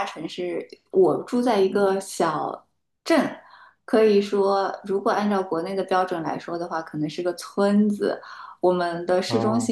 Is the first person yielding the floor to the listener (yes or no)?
no